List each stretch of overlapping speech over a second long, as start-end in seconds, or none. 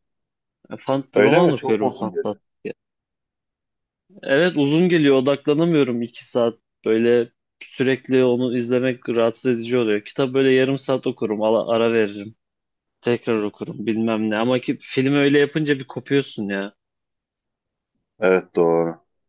1.1-2.4